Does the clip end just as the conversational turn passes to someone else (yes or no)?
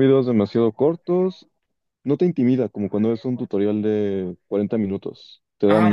yes